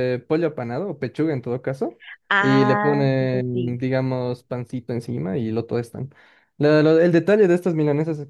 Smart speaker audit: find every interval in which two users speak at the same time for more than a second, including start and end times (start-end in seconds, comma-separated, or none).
2.4-3.8